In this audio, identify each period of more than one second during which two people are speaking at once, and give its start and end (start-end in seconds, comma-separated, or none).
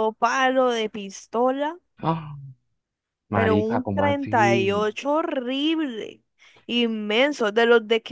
3.3-4.9